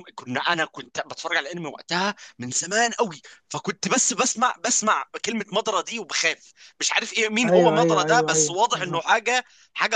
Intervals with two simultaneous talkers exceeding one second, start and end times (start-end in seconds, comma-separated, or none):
7.4-9.2